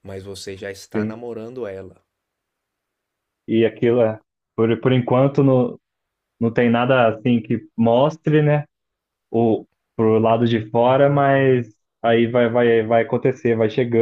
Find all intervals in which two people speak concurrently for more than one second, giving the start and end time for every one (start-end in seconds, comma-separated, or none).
none